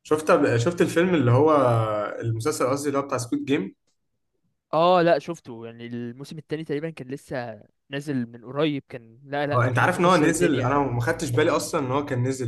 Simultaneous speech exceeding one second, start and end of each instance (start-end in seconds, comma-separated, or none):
9.7-10.9